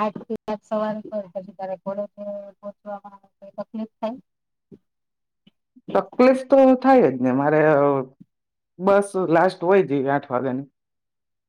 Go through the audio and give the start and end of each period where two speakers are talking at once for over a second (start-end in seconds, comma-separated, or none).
none